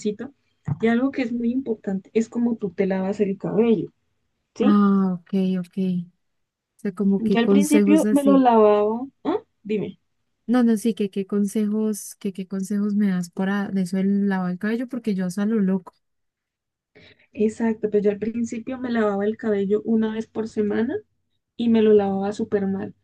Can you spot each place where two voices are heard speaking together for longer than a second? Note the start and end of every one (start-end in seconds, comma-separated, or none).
7.2-8.4